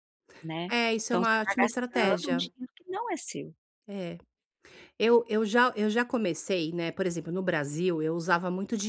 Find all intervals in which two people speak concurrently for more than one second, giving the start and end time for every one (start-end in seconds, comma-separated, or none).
0.7-2.5